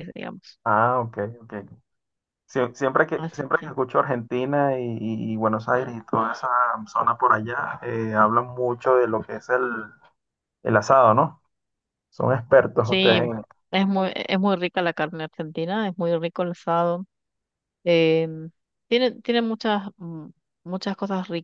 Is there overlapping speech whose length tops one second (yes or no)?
no